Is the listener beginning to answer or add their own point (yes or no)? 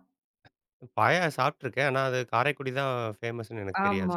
yes